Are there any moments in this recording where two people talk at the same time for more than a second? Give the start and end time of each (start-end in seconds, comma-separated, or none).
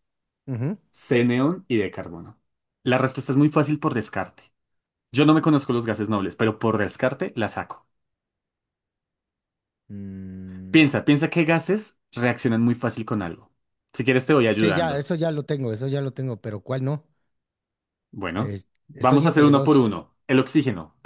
18.3-19.9